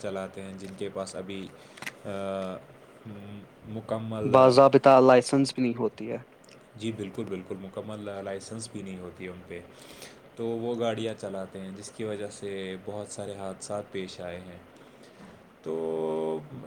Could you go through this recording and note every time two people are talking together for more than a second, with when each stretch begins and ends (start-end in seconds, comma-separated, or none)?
none